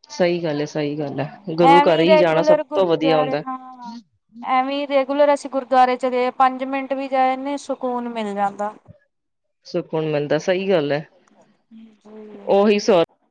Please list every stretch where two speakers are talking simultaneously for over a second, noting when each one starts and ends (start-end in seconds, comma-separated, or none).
1.7-3.4